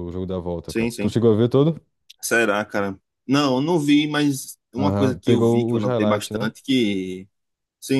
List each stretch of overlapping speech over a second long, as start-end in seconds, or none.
4.8-6.5